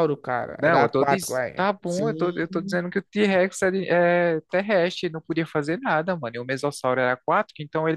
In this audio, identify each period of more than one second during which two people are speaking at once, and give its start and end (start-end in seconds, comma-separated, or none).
0.6-2.8